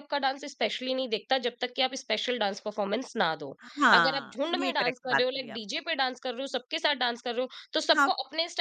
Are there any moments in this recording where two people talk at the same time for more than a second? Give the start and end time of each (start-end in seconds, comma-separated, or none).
3.9-5.8